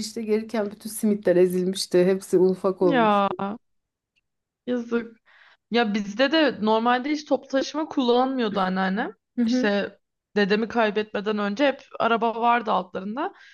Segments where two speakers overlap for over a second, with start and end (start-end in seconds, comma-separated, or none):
none